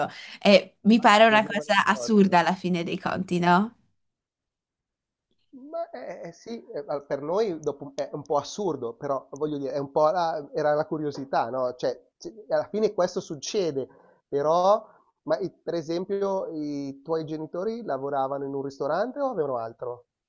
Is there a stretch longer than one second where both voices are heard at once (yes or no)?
yes